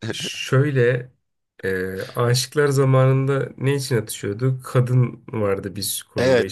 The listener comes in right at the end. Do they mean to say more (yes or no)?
yes